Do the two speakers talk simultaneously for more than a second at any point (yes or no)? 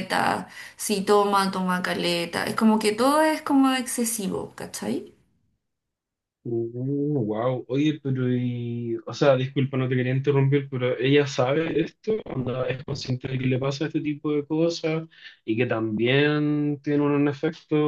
no